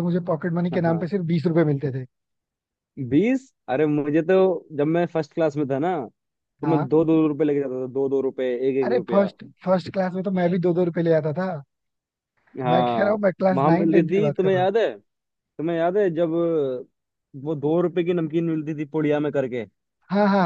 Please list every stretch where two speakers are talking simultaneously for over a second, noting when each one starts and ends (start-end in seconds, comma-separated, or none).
12.7-14.7